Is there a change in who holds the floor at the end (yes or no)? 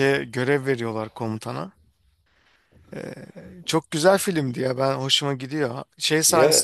no